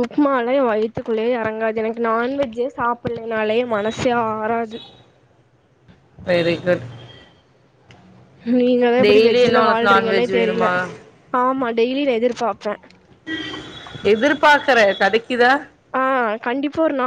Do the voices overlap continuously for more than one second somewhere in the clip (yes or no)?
yes